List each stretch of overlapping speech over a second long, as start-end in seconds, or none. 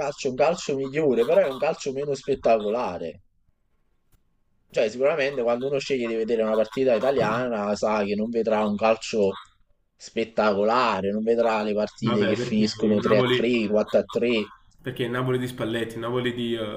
12.0-13.5